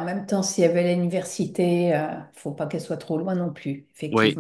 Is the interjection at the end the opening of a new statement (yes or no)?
yes